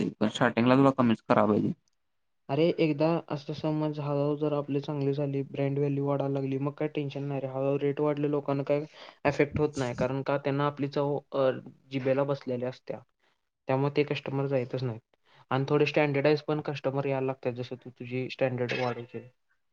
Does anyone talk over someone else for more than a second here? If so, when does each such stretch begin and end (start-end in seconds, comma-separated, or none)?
none